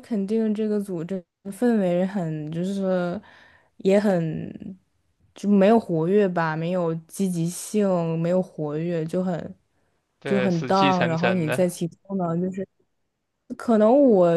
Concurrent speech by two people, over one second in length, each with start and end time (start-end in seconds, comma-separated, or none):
10.2-11.8